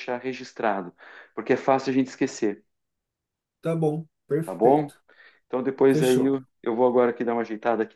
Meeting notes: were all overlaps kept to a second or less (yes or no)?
yes